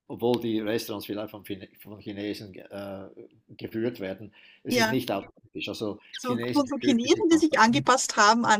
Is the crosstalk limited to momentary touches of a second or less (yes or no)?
no